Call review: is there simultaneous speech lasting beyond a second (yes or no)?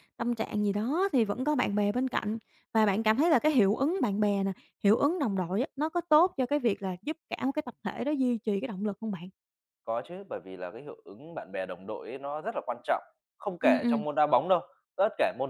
no